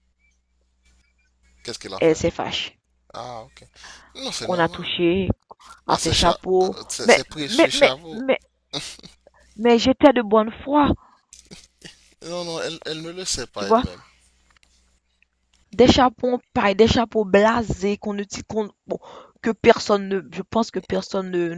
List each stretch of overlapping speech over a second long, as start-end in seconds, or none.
5.9-8.2